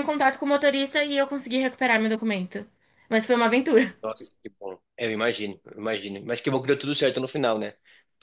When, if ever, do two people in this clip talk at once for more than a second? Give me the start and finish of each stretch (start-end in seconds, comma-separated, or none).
none